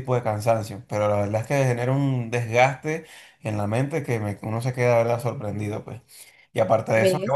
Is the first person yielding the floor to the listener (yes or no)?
no